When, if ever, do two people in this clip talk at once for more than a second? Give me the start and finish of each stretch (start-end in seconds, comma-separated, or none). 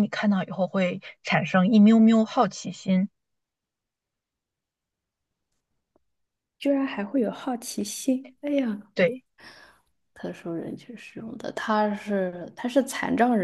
none